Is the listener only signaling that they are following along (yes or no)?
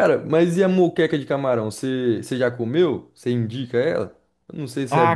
no